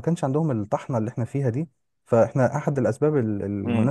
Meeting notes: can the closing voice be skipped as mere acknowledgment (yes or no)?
no